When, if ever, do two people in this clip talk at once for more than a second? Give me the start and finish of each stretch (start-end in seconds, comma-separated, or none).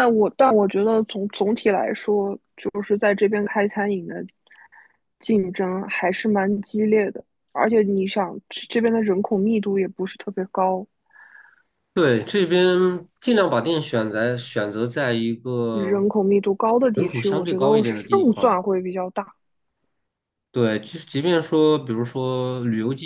16.9-18.6